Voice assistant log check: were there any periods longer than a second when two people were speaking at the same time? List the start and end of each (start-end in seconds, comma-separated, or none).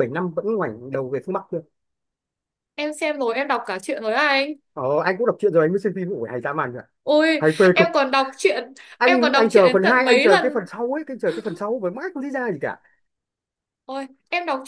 9.0-10.6